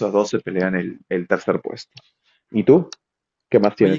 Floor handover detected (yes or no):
yes